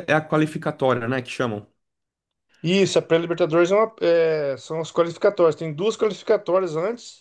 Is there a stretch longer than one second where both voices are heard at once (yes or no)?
no